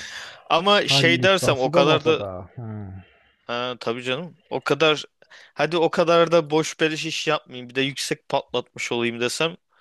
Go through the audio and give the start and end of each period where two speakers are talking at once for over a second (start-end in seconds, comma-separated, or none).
0.7-2.2